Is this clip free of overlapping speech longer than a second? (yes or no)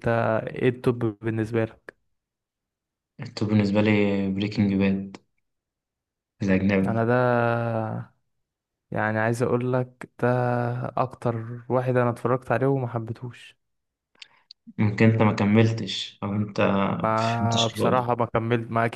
no